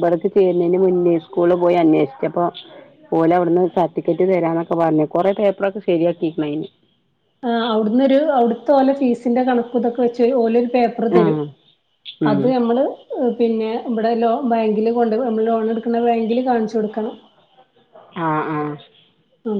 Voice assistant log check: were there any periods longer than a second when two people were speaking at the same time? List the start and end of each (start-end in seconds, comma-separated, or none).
none